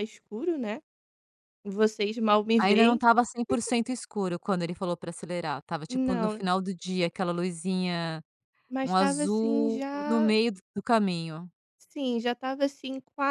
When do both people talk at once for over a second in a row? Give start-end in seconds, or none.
8.8-10.3